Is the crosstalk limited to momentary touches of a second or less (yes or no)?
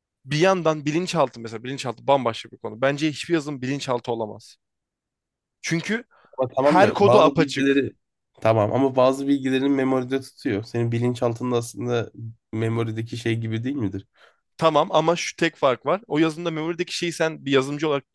no